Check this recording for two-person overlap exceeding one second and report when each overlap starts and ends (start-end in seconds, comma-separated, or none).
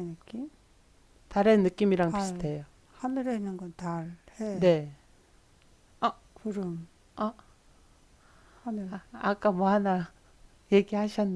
none